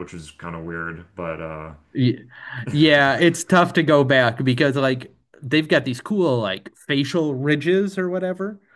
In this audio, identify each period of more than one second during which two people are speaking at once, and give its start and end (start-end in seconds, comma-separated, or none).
none